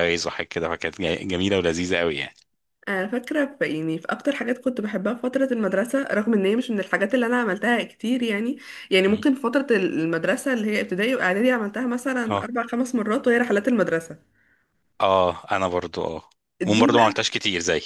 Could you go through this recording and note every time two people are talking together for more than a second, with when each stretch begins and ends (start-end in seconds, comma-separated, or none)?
none